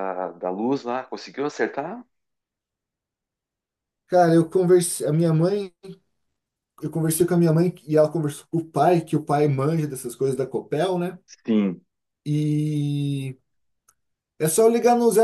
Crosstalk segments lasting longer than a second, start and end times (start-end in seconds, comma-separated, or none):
none